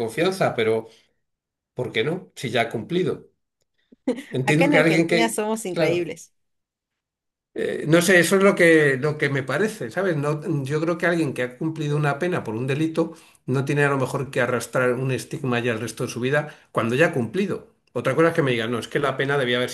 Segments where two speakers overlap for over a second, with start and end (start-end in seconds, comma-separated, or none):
4.4-6.1